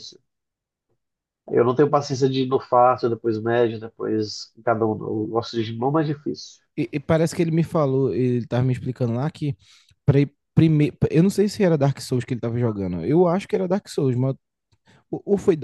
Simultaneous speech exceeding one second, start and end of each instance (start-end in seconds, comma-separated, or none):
none